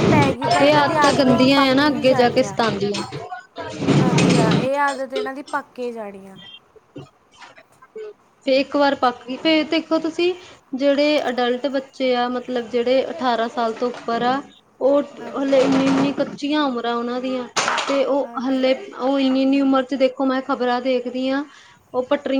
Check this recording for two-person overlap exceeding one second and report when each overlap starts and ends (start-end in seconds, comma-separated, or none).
0.6-2.6